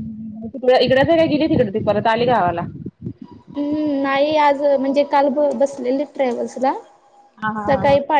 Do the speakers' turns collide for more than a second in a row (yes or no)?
no